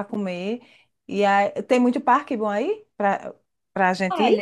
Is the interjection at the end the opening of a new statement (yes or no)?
yes